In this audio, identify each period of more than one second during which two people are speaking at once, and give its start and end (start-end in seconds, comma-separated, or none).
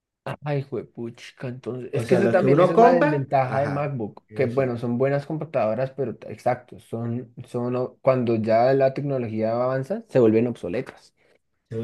1.9-4.8